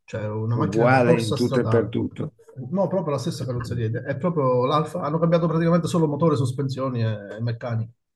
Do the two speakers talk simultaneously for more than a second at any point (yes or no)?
yes